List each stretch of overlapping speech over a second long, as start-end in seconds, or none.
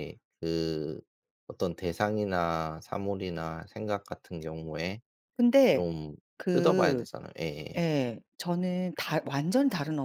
none